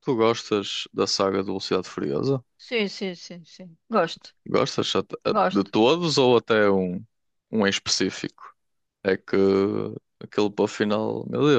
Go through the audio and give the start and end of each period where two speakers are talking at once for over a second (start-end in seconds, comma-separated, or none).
none